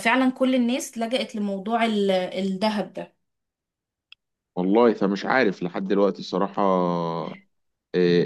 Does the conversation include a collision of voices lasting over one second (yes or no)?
no